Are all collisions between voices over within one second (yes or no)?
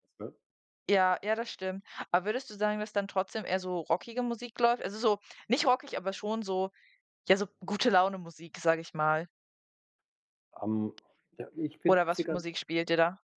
yes